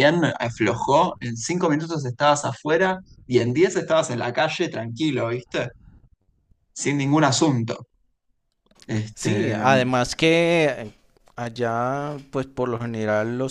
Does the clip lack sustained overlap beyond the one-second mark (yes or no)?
yes